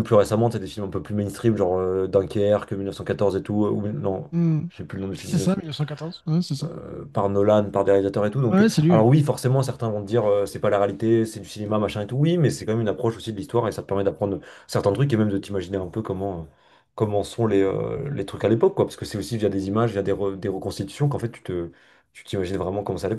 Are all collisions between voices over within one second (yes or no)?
yes